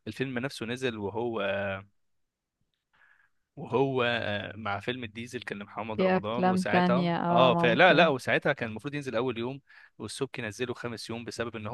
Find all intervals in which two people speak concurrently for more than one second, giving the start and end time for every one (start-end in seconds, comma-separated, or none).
6.0-8.1